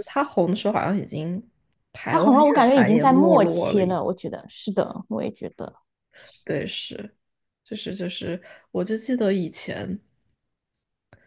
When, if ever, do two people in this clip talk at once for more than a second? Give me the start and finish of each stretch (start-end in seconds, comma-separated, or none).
2.1-4.0